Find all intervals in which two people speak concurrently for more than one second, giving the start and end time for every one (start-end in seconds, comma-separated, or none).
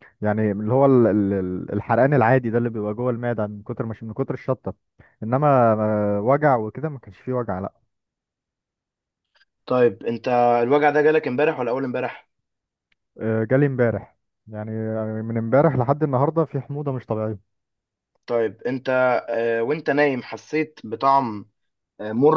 none